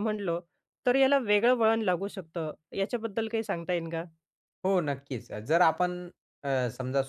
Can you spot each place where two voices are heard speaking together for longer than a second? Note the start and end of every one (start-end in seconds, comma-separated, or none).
none